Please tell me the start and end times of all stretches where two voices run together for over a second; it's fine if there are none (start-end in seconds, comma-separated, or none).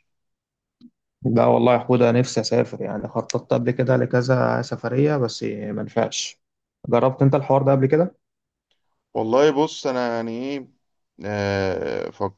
none